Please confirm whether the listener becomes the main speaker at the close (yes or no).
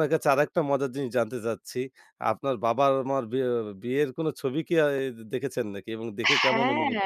yes